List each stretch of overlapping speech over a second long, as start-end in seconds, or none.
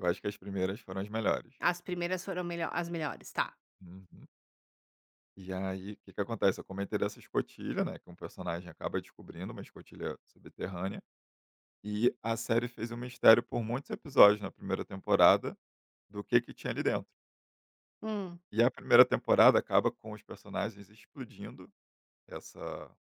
none